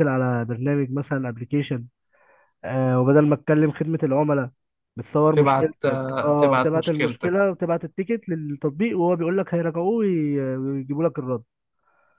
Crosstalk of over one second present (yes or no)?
yes